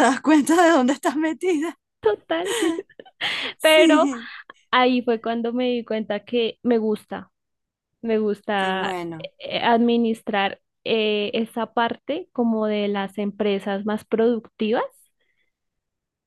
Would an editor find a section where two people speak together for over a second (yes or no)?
no